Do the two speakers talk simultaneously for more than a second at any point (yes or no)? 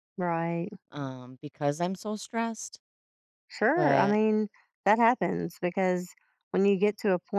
no